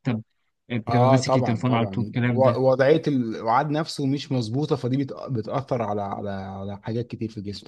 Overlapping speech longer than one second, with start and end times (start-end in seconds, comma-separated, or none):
0.9-2.6